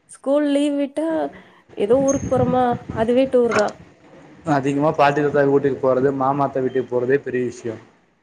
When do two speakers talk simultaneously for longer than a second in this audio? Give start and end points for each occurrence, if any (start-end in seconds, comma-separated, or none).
none